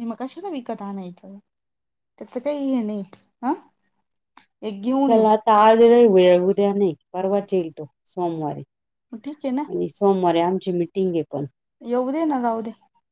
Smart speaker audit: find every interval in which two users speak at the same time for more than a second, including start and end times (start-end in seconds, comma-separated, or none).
none